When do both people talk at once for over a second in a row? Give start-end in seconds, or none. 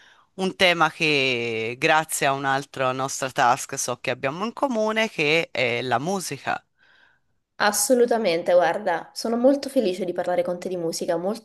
none